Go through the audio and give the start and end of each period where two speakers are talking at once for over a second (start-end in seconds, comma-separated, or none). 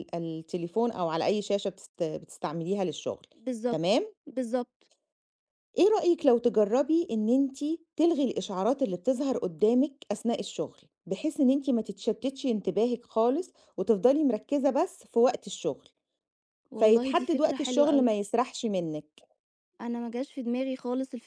16.8-18.2